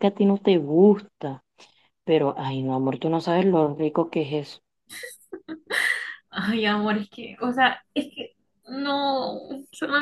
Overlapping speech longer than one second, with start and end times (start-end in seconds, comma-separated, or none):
none